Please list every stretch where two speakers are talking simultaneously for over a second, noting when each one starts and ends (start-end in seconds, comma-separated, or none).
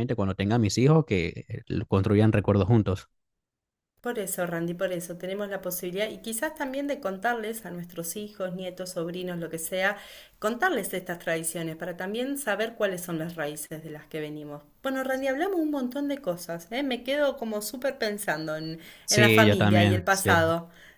19.1-20.4